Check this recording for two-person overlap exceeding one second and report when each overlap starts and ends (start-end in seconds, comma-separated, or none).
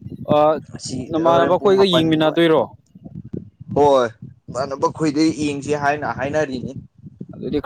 1.1-2.4